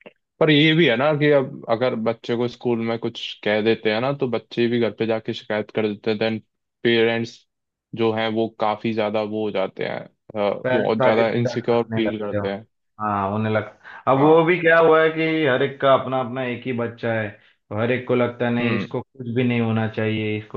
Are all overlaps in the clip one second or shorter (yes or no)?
no